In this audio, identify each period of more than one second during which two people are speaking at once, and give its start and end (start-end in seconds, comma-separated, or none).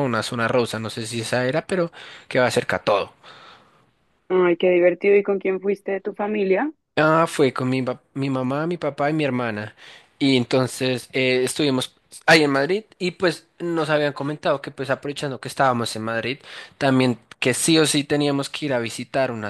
none